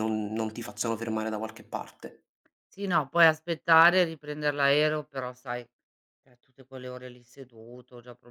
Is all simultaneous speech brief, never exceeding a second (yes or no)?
yes